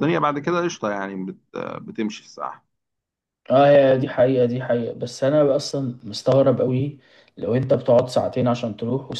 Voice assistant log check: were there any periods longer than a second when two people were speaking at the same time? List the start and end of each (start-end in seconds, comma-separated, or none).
none